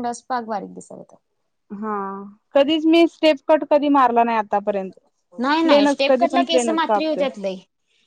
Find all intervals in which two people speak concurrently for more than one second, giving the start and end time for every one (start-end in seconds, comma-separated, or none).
5.6-7.2